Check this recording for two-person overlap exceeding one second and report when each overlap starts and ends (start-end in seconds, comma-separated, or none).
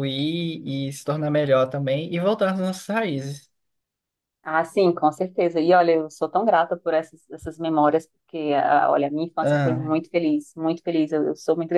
none